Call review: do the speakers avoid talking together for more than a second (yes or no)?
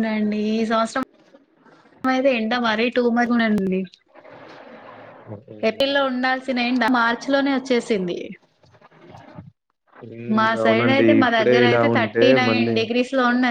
no